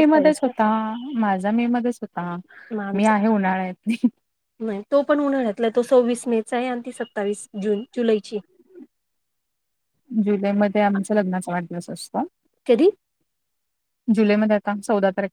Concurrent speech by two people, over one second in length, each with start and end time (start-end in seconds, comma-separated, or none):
none